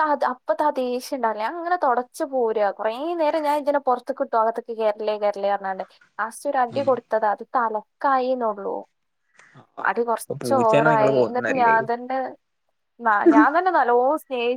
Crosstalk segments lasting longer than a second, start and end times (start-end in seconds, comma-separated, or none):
10.2-11.7